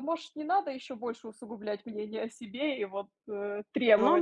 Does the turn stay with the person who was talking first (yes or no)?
no